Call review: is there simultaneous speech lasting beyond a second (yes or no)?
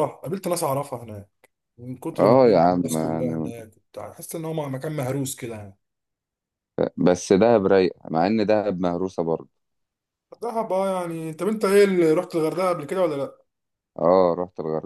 yes